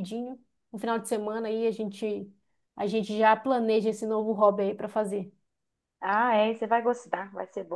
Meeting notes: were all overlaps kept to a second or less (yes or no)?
yes